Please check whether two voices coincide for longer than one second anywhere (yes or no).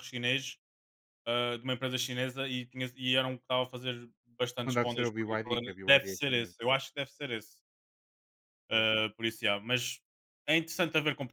yes